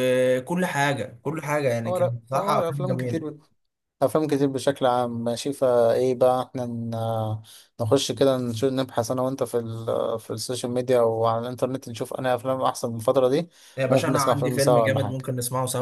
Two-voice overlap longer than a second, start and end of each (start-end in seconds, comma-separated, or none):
1.9-3.4, 13.9-15.2